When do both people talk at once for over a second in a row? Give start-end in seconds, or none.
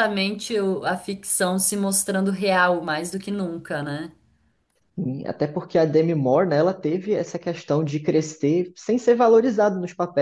none